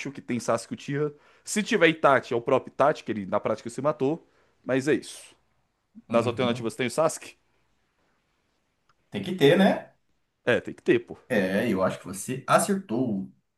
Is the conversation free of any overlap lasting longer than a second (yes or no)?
yes